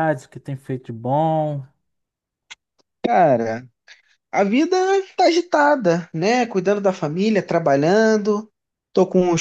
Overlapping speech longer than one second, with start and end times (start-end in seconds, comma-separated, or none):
none